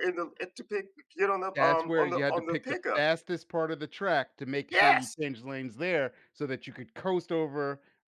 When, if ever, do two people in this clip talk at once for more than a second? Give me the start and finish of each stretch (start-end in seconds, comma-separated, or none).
1.6-3.0